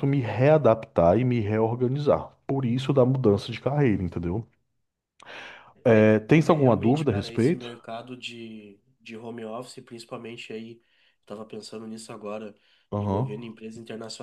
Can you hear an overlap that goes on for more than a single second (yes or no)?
yes